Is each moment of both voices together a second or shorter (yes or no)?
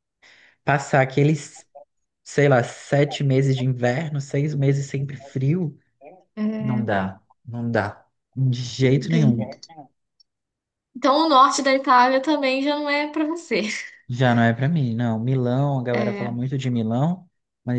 yes